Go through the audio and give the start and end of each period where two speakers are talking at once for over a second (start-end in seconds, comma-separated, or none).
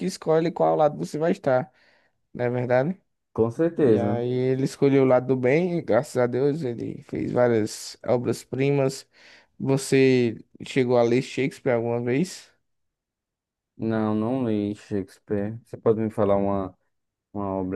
none